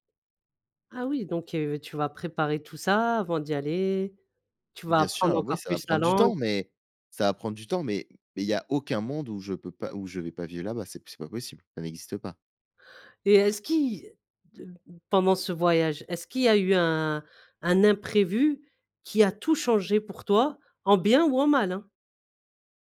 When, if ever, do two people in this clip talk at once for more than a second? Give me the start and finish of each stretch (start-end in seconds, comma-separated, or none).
4.9-6.3